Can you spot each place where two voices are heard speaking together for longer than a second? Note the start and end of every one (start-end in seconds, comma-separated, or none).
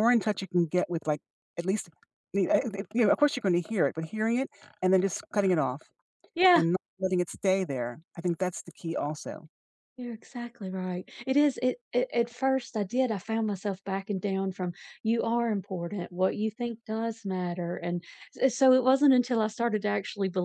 none